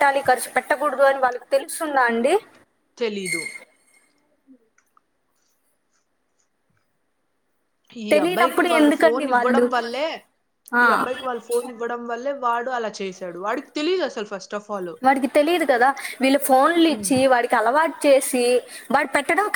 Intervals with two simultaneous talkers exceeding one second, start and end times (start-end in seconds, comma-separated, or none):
8.1-9.6